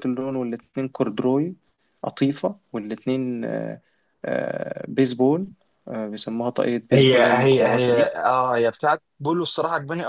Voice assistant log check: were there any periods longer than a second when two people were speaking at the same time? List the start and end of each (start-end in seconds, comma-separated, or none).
6.9-8.1